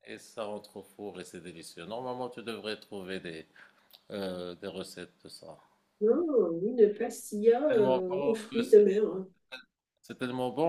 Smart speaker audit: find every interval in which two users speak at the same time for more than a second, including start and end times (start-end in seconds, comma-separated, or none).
7.7-9.0